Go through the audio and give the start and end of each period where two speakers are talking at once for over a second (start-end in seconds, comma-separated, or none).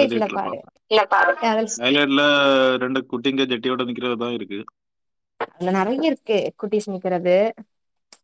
none